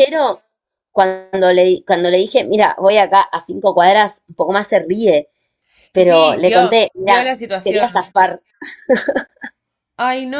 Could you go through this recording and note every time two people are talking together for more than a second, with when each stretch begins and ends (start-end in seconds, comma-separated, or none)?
6.0-8.2